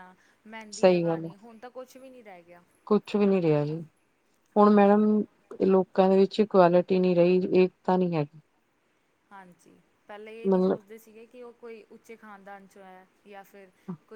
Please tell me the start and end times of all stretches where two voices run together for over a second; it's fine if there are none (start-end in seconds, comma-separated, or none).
none